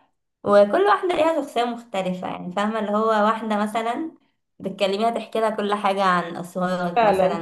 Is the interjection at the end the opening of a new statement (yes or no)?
yes